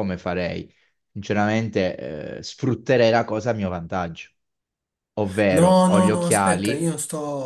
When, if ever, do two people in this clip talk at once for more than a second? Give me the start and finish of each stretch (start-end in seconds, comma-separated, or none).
5.5-6.9